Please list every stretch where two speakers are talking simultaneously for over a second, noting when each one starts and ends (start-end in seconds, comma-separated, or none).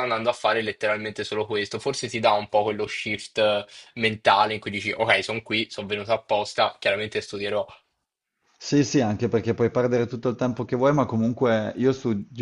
none